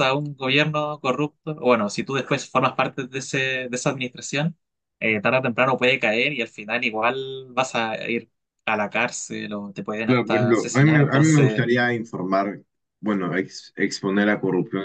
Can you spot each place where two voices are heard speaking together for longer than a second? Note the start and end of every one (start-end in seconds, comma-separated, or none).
10.0-11.6